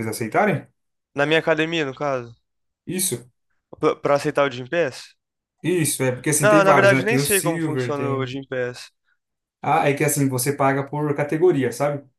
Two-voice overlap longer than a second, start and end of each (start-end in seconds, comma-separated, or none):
6.4-8.4